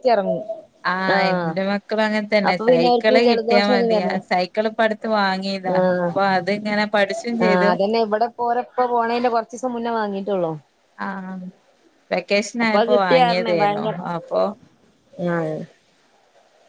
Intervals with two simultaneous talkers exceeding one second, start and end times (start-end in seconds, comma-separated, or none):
2.7-4.1